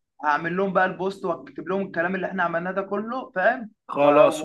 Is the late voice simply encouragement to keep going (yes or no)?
no